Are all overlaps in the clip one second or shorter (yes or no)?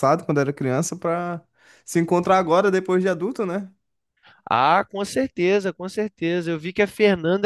yes